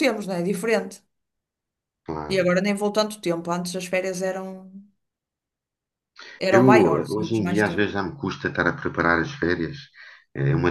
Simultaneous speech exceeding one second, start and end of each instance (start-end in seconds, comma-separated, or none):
6.5-7.9